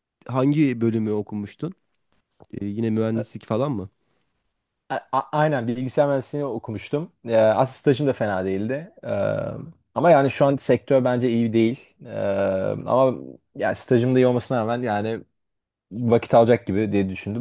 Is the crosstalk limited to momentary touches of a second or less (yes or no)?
yes